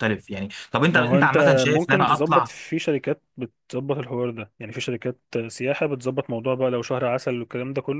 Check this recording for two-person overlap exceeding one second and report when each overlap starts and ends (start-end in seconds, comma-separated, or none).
0.9-2.5